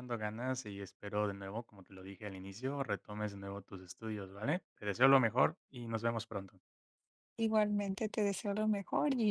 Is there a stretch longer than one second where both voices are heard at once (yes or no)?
no